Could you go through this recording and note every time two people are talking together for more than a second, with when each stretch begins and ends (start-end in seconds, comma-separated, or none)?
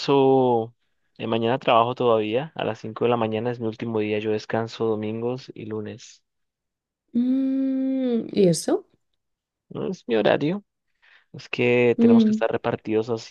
none